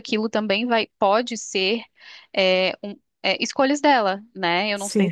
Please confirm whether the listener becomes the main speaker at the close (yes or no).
yes